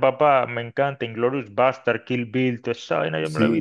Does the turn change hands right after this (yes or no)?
yes